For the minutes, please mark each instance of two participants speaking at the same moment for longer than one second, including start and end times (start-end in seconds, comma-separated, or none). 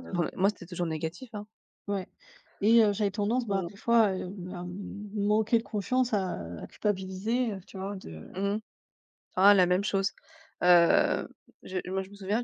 none